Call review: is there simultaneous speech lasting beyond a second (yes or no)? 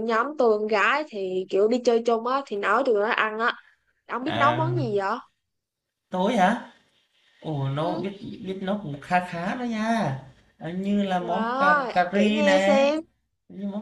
yes